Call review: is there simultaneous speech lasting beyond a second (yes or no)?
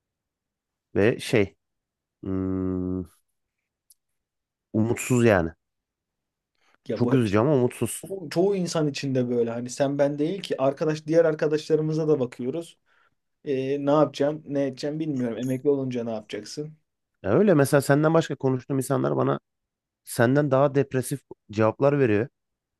no